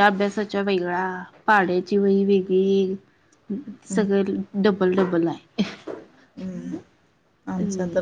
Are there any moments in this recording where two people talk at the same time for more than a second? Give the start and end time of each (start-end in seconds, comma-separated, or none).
none